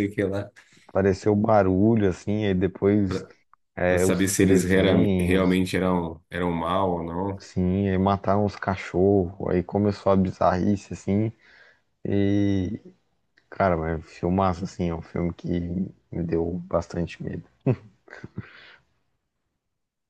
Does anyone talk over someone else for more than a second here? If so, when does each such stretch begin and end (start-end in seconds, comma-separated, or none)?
3.9-5.6